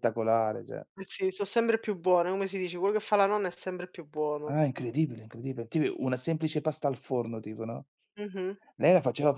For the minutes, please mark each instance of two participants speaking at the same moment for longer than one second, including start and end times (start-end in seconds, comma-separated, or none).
none